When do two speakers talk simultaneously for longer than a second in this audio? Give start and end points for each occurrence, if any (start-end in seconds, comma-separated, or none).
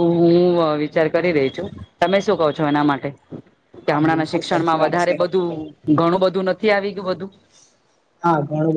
3.9-5.1